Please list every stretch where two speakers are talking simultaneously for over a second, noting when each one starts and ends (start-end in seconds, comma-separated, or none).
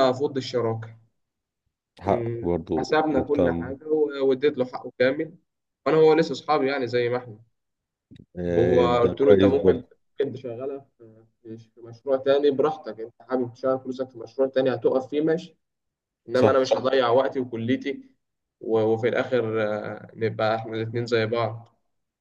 2.0-3.7, 8.5-9.8